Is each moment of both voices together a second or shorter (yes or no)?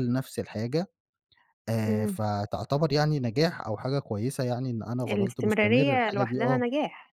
no